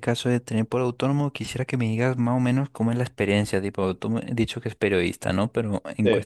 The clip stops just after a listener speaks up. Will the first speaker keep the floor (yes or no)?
yes